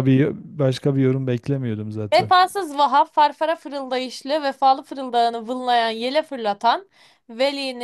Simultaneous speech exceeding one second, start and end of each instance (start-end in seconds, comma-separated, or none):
none